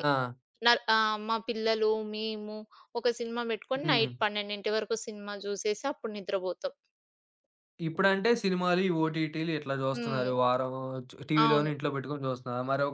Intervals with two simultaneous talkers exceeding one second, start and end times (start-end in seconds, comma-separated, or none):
none